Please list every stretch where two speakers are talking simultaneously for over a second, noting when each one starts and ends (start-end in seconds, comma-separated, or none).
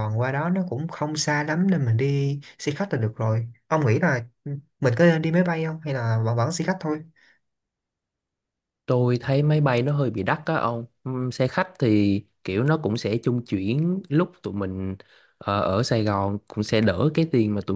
none